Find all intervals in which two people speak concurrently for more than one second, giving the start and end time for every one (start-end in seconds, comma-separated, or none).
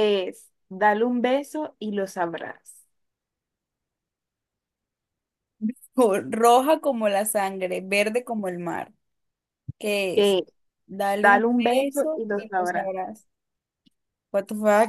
11.2-12.9